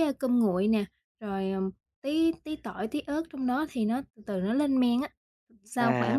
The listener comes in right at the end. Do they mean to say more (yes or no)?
yes